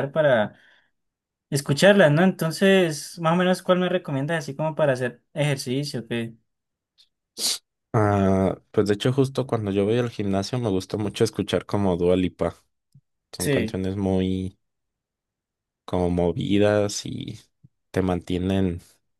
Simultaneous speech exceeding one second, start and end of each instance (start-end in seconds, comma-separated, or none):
none